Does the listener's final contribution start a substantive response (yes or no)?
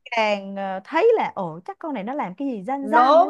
yes